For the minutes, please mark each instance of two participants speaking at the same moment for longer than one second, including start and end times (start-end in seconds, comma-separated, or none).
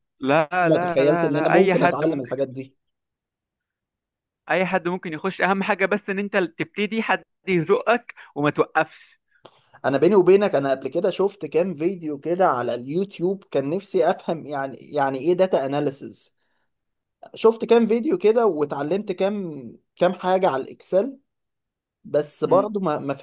0.6-2.7